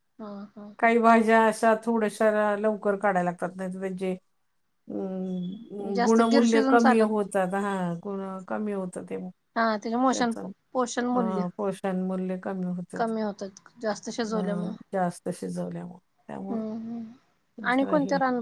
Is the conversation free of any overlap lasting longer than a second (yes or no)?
no